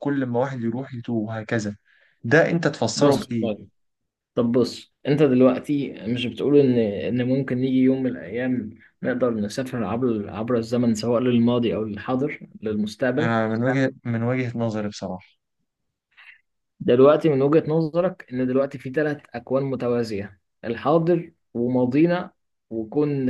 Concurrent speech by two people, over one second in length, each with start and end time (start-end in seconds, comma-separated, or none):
none